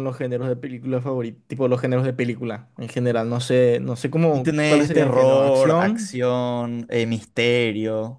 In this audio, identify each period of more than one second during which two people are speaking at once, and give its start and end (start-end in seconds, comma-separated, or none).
4.3-6.2